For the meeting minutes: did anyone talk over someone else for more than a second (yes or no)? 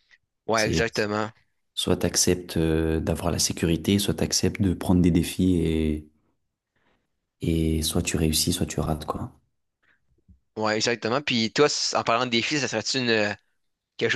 no